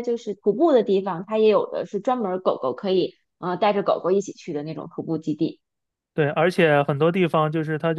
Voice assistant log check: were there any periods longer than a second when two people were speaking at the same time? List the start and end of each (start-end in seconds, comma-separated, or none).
none